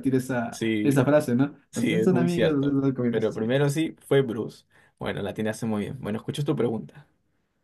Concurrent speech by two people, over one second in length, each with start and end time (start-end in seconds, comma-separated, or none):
1.7-3.4